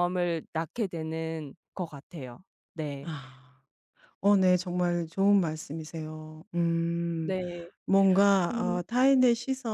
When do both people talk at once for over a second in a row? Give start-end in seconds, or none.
none